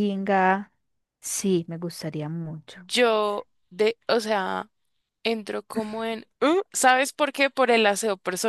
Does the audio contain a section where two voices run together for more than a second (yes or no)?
no